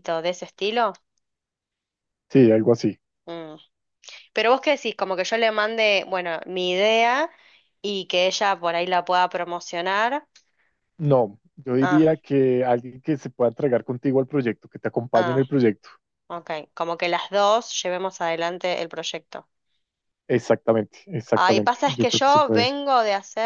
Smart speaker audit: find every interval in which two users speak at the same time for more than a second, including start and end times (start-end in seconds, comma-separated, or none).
21.3-22.7